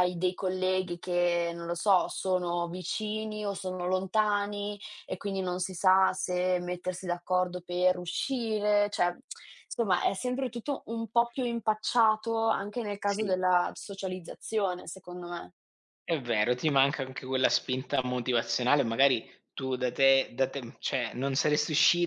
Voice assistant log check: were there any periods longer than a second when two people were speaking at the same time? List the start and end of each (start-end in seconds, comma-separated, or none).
none